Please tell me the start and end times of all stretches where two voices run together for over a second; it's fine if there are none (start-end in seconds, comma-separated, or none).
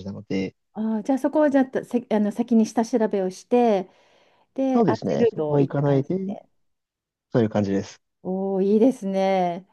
4.7-6.2